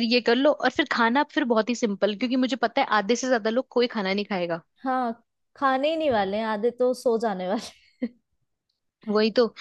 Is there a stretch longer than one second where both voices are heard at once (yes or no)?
no